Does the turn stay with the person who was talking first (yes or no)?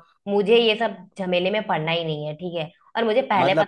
yes